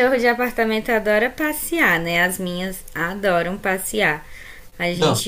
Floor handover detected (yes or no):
no